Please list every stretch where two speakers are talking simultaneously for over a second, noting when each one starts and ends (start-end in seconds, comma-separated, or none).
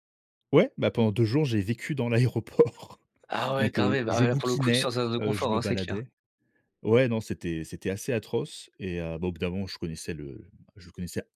3.6-6.0